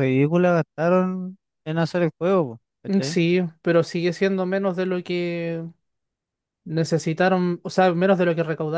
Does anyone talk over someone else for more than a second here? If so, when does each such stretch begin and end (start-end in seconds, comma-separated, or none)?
none